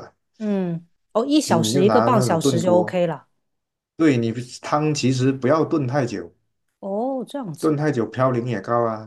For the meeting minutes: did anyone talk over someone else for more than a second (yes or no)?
yes